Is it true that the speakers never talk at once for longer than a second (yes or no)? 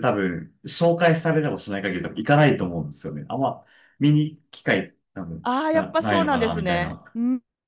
no